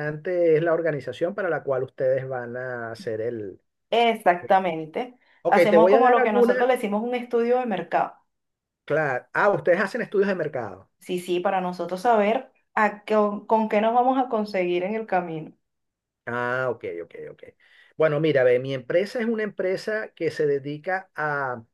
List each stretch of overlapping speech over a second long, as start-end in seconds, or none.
5.4-6.7